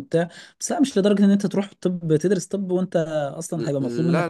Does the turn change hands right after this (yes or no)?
yes